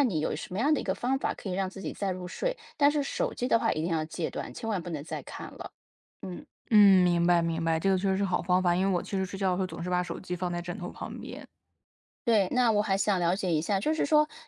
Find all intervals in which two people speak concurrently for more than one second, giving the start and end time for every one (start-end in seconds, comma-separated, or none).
none